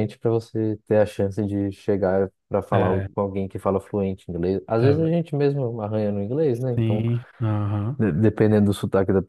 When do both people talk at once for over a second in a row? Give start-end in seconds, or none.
none